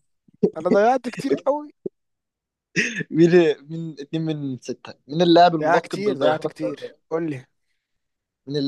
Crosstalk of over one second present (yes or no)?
yes